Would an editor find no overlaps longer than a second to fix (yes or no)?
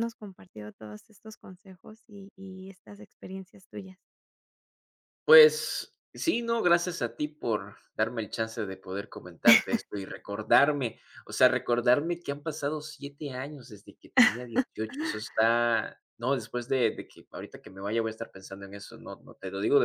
yes